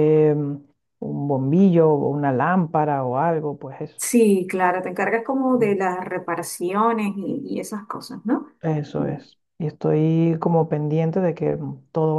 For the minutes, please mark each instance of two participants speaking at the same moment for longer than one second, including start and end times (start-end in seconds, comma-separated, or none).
none